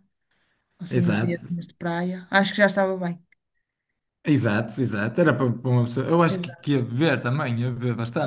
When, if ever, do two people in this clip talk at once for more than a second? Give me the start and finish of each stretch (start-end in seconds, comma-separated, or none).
none